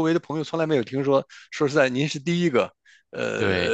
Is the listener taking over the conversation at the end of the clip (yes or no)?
no